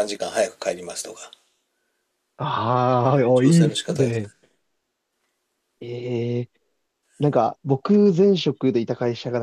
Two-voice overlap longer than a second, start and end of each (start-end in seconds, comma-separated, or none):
3.0-4.3